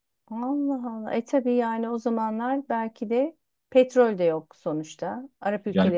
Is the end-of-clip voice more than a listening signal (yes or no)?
yes